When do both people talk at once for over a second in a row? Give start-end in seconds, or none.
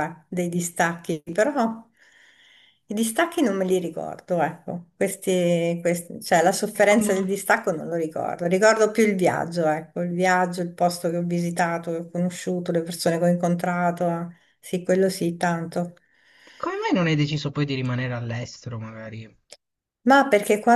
none